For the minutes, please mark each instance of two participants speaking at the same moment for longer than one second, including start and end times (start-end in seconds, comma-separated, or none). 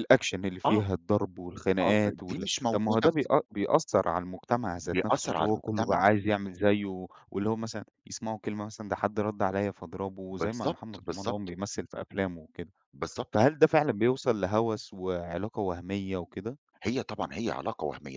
1.9-3.3, 4.8-6.0, 10.3-11.5